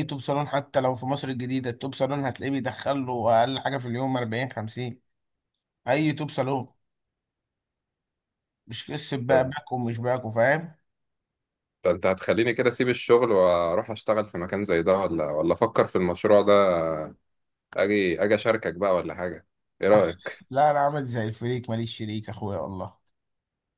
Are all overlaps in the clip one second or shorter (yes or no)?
yes